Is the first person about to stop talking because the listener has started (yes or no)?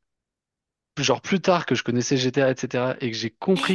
no